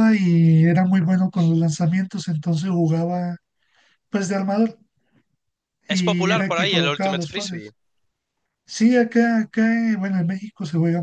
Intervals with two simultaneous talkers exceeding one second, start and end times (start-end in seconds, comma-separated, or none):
5.9-7.7